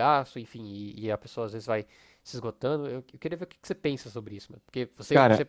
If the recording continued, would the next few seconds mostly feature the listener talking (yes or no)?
no